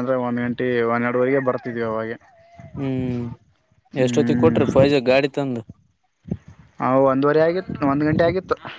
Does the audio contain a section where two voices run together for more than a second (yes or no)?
no